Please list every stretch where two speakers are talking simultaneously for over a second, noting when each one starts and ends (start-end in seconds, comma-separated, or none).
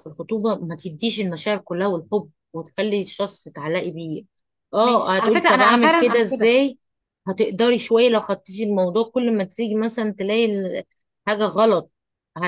4.8-6.5